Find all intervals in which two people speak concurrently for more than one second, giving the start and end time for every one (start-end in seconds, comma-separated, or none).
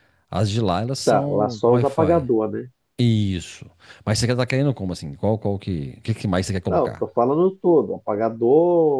1.0-2.2